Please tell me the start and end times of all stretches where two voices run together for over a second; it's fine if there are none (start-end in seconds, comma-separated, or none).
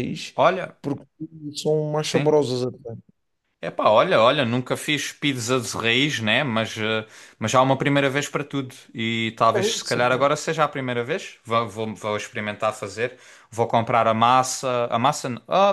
none